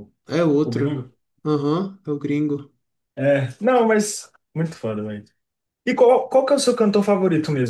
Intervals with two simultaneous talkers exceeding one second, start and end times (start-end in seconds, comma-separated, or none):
none